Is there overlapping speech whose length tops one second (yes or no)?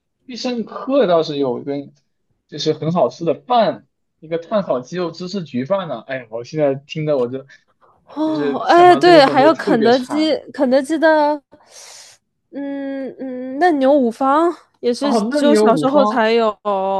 yes